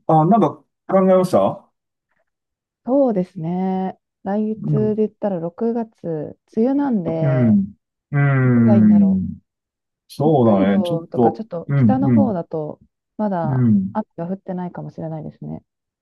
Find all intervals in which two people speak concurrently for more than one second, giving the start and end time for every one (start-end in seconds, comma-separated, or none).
10.2-12.4